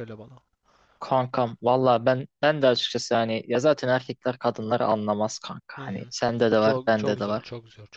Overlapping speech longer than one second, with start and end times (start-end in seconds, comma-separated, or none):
5.7-7.5